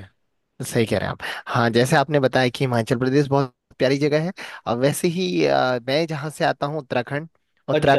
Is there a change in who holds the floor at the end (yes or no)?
no